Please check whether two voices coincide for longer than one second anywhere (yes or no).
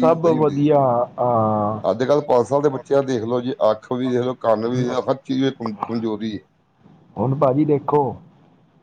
no